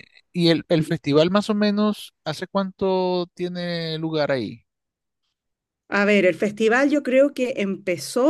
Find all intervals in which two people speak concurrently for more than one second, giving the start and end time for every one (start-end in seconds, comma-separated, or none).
none